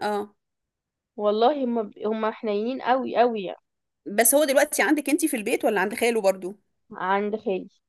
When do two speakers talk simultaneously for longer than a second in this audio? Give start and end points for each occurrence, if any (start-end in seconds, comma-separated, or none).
none